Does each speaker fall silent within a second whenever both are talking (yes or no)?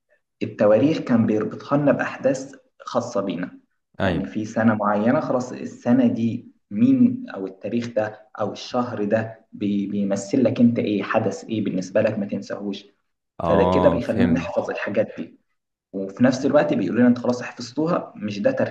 no